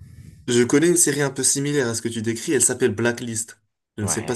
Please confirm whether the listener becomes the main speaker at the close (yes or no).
yes